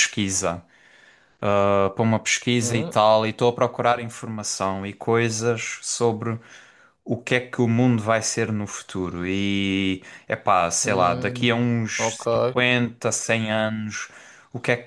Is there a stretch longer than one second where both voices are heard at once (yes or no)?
yes